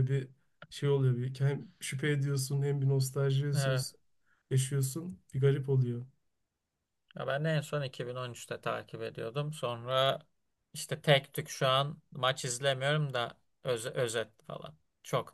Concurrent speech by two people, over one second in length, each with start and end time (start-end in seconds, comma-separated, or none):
none